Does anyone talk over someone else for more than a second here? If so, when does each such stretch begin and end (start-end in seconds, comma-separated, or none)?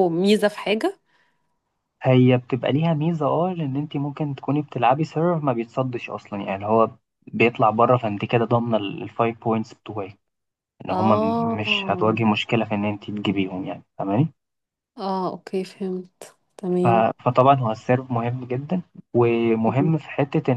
10.9-12.2